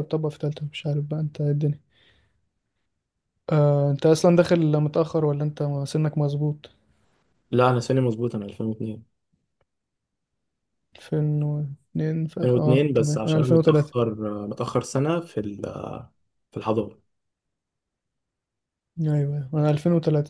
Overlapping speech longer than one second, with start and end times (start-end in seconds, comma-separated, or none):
12.4-13.9